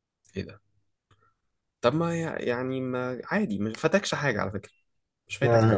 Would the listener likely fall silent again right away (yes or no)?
no